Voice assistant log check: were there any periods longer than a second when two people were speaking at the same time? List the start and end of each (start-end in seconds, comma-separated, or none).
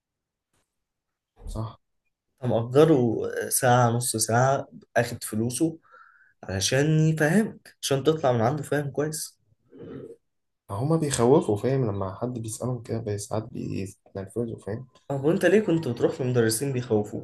none